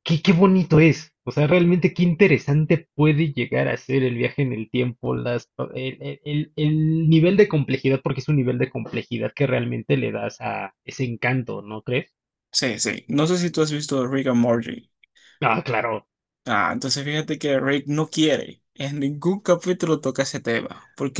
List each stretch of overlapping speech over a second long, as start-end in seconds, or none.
none